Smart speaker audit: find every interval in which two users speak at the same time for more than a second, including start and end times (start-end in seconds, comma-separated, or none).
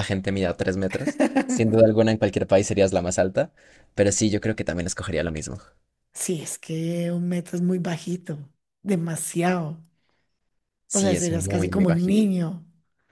11.0-12.2